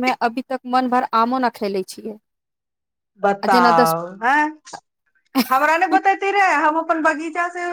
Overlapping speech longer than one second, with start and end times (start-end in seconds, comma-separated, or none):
none